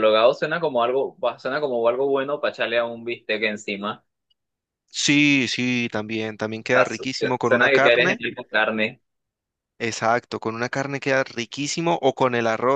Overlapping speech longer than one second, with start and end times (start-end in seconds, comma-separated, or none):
6.7-8.2